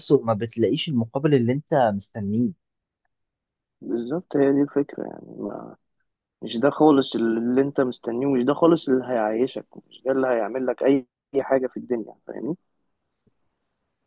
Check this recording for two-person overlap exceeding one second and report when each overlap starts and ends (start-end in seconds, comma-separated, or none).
none